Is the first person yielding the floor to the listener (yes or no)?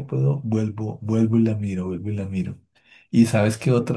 no